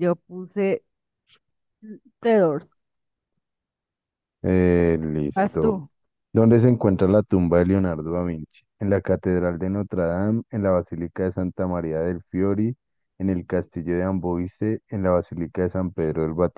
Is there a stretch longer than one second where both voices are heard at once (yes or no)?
no